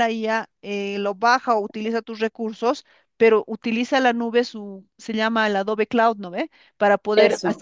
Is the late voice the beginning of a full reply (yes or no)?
no